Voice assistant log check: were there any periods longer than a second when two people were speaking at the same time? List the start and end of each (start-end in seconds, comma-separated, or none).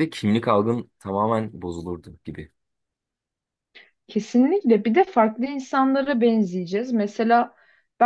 none